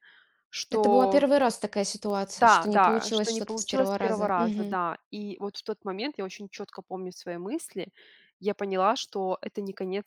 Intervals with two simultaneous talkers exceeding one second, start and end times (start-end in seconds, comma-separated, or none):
2.4-4.8